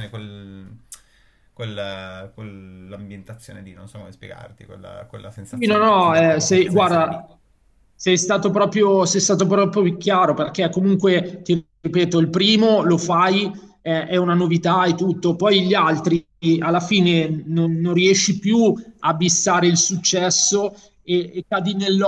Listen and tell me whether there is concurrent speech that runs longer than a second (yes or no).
yes